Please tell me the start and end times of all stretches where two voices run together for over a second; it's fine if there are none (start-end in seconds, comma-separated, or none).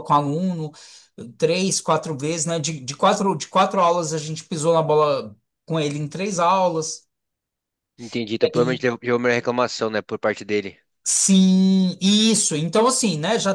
none